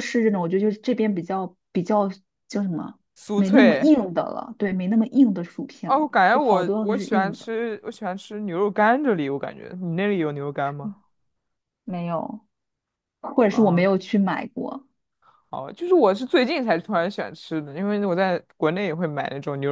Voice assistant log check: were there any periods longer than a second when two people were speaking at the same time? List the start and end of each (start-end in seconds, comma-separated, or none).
5.8-7.5